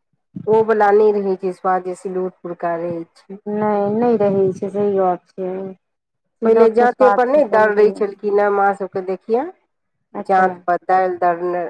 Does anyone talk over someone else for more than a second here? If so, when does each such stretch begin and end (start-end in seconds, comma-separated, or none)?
none